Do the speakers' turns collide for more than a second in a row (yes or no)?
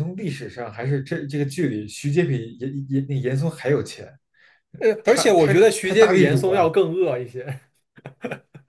yes